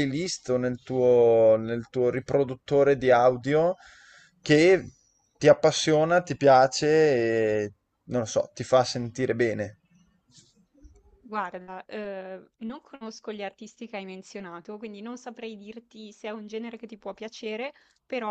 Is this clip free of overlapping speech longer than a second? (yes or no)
yes